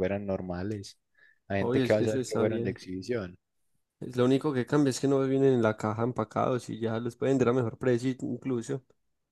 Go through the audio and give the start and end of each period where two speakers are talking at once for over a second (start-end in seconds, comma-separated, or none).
1.6-2.8